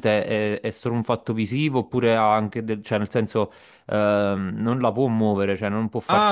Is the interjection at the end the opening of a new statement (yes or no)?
yes